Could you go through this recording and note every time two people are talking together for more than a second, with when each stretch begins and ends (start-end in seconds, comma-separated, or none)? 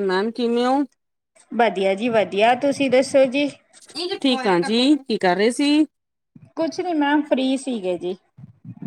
none